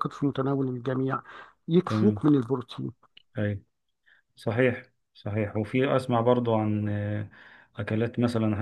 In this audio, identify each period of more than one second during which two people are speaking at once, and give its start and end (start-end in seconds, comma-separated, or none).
none